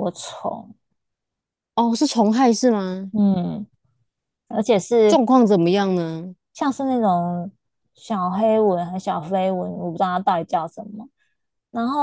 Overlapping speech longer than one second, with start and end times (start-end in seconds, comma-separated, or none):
none